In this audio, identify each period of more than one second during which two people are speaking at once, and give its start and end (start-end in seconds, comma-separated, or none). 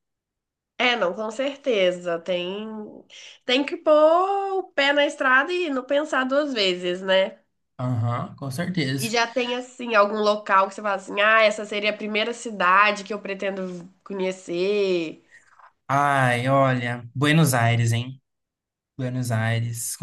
none